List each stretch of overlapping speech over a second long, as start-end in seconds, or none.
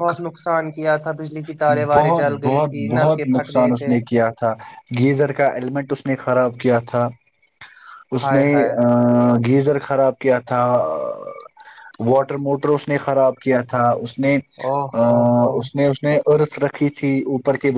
2.0-3.9